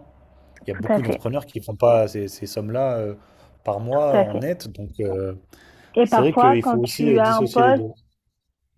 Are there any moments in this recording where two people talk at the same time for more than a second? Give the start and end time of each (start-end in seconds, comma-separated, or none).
6.0-7.9